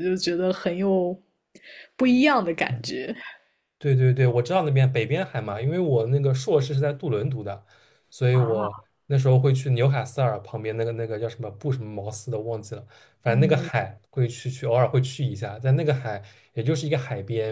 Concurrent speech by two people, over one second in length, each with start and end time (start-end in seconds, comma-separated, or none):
none